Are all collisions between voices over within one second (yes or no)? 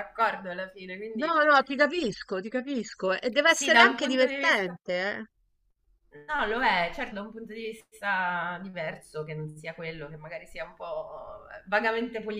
no